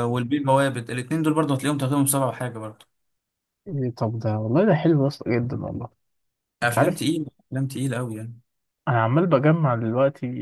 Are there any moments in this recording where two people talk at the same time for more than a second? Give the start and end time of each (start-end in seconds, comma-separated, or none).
none